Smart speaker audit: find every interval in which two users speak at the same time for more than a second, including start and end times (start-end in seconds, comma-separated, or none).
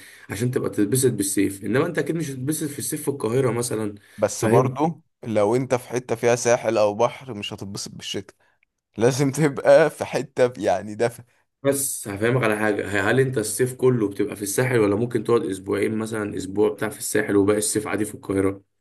none